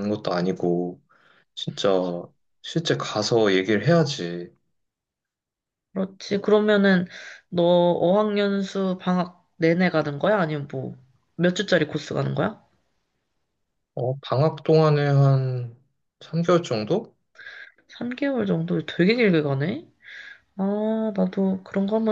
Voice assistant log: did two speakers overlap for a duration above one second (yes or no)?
no